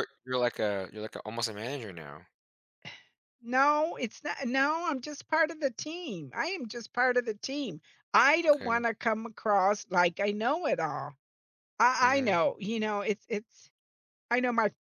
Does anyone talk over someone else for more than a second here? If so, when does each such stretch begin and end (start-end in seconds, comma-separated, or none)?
none